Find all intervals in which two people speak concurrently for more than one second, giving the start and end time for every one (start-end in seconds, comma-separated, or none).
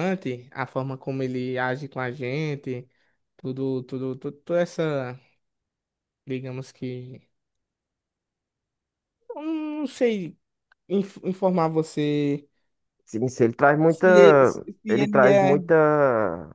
13.9-15.6